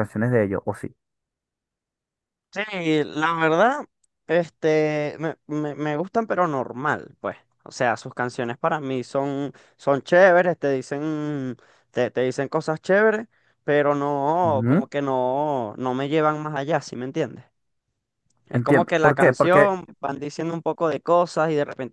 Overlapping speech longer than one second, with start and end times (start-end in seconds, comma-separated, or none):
18.5-19.7